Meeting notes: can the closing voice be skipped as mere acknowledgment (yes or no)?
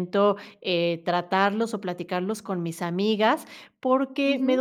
yes